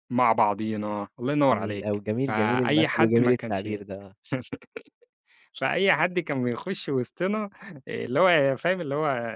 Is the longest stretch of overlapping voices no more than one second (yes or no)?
no